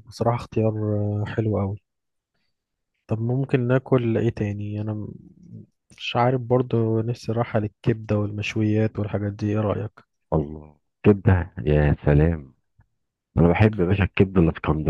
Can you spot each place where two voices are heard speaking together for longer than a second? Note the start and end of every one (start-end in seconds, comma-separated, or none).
none